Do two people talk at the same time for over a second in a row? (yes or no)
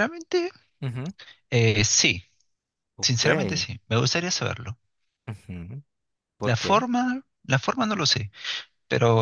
no